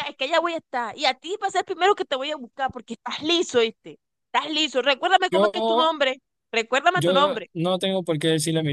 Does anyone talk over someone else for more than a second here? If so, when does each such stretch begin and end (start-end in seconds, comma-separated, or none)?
none